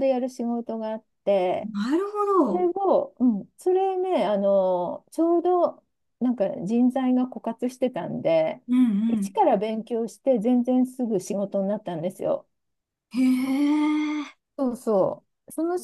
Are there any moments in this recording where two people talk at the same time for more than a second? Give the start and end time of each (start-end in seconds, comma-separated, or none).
none